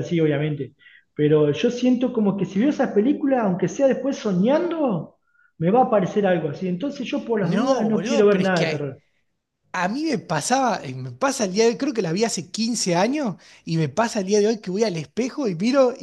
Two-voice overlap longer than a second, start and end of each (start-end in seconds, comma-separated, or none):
7.4-8.7